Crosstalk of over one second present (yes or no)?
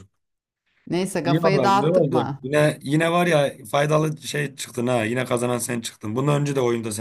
yes